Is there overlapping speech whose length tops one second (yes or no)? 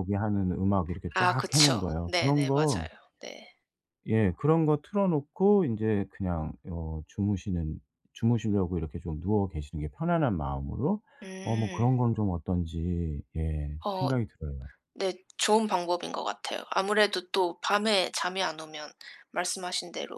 yes